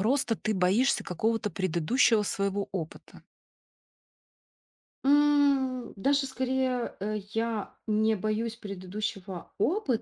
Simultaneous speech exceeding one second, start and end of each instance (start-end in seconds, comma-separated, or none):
none